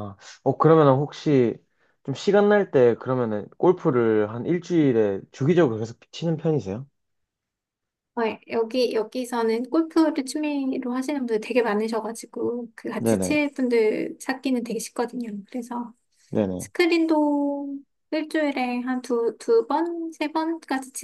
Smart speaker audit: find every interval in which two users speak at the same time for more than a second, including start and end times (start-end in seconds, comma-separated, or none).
none